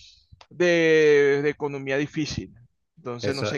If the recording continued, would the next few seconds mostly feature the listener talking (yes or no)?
yes